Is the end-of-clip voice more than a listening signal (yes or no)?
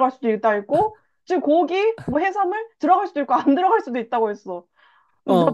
yes